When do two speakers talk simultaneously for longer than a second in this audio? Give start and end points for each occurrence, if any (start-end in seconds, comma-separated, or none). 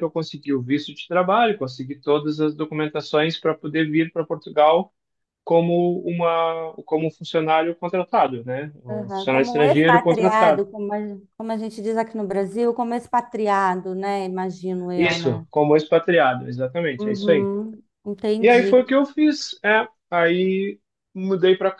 8.9-10.6